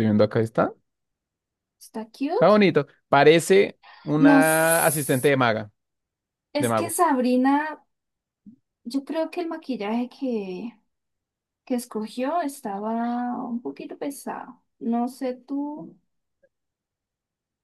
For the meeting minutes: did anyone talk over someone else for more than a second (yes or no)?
no